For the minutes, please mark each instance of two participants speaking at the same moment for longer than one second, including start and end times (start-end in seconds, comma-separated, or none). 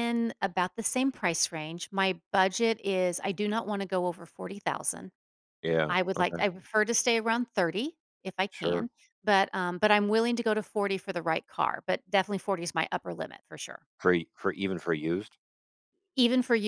none